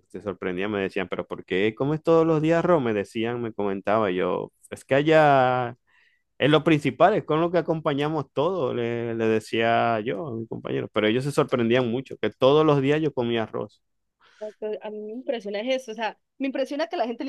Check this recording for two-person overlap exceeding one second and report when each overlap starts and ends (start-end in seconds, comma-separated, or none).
none